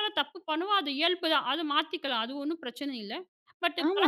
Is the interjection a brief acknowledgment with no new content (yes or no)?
no